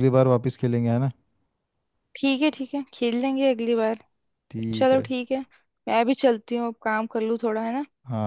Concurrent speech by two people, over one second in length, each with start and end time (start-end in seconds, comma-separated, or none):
none